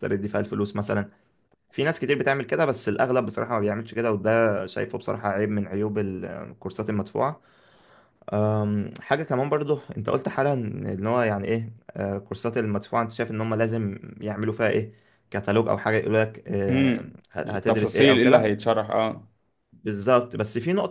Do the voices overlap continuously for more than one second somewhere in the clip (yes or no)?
yes